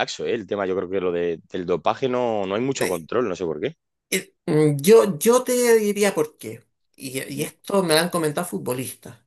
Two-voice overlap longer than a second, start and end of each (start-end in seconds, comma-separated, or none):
none